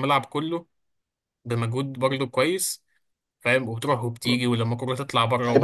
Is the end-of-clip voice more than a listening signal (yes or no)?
yes